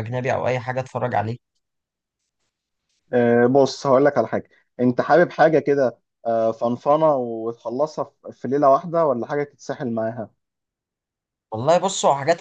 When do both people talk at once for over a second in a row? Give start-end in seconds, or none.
none